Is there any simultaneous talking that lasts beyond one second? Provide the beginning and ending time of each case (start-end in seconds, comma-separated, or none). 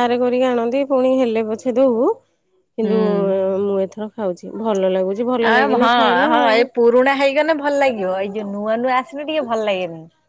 none